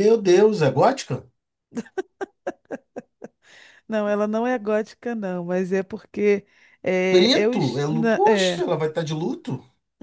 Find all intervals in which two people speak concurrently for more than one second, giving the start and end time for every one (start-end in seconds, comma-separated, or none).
7.1-8.6